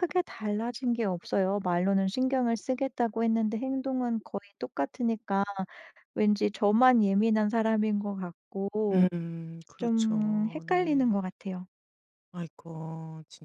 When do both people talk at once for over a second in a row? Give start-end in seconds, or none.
9.8-11.1